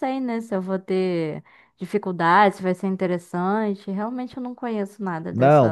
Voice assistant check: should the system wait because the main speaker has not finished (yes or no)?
no